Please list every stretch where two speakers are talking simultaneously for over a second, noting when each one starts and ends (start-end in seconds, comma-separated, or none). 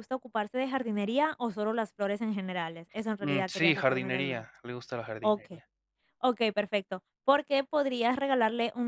3.2-4.5